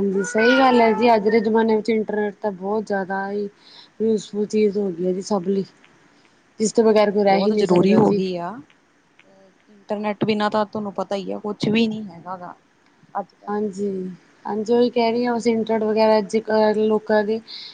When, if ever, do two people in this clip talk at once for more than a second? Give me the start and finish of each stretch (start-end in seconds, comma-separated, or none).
6.7-8.2